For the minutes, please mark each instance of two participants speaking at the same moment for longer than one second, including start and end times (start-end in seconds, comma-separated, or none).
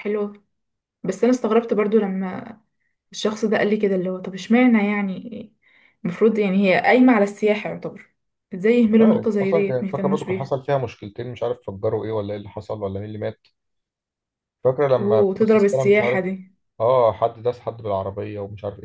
8.9-10.5, 15.0-16.2